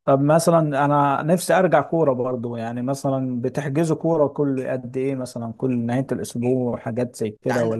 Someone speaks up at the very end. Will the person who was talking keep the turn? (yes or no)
no